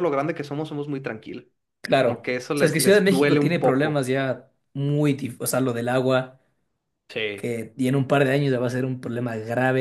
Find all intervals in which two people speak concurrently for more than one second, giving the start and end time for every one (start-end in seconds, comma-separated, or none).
1.9-4.1